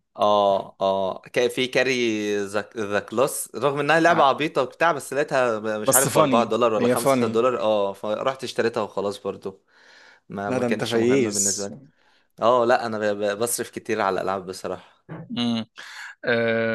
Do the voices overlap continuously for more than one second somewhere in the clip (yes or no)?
yes